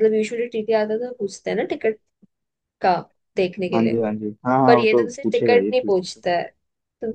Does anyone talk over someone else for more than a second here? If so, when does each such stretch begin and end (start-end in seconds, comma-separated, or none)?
4.7-6.2